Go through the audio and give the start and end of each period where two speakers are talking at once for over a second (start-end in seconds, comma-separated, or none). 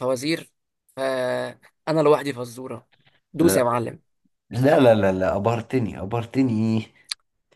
none